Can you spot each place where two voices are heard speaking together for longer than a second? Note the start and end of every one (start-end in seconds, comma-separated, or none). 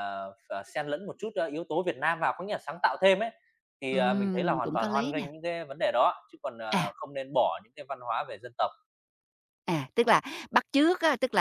3.9-5.3